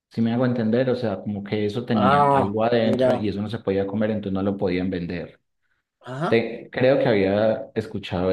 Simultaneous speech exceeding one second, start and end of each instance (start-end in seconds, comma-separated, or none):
1.9-3.3